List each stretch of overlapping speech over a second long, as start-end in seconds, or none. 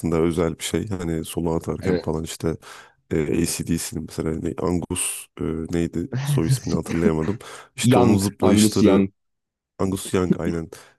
7.8-9.1